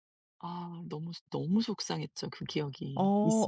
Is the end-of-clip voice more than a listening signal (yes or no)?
yes